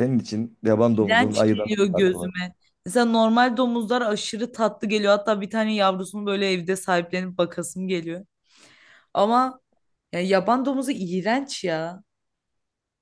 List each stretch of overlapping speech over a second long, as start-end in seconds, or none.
1.0-2.3